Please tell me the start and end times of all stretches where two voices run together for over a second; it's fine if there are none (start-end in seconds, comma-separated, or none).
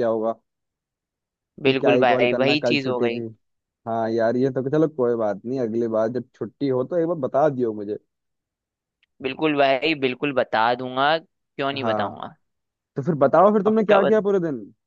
1.6-3.2